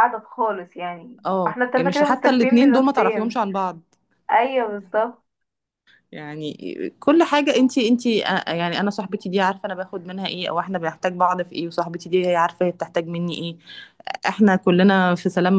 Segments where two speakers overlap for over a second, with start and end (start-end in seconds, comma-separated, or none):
1.2-3.4